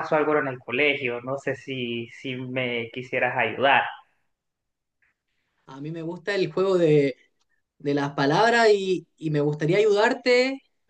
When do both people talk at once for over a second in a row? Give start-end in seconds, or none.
none